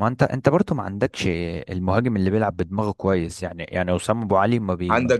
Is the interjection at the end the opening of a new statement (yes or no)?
yes